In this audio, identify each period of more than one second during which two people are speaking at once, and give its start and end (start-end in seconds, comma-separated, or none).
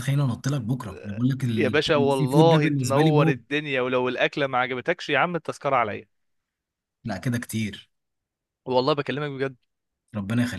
1.6-3.4